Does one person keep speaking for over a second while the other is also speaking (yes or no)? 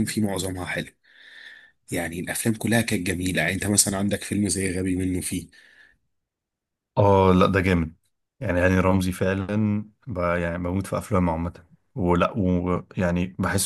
no